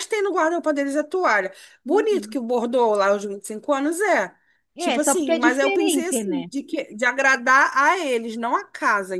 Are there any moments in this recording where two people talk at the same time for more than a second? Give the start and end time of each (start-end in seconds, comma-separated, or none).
4.8-6.4